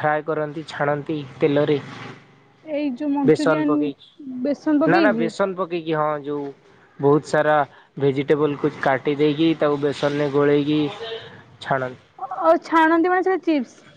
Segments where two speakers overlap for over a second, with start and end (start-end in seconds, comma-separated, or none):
3.3-5.3